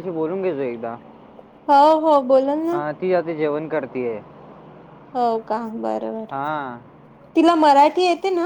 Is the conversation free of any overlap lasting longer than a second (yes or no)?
yes